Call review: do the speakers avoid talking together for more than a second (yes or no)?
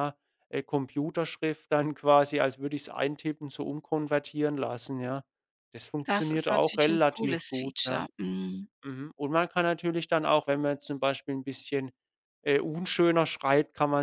no